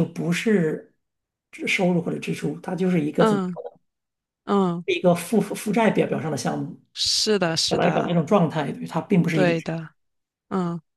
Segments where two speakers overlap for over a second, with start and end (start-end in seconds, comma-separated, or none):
none